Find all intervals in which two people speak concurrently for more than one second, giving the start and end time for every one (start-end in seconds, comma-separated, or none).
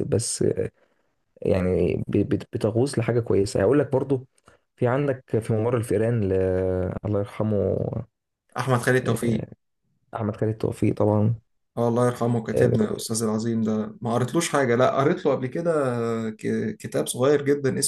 none